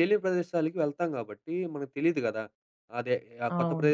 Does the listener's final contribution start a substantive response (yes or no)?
no